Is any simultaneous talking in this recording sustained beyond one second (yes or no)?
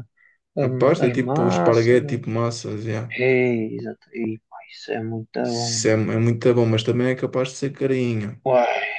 yes